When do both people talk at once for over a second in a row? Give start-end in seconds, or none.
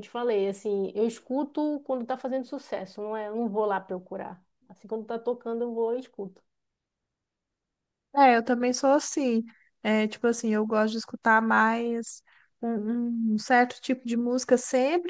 none